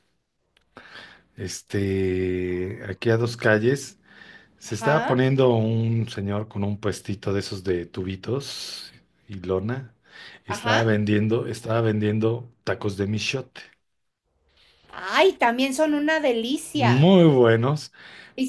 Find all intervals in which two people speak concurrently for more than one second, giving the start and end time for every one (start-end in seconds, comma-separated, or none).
none